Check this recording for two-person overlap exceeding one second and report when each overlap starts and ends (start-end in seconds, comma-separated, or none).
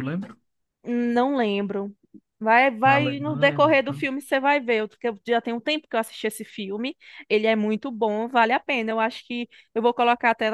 2.9-4.2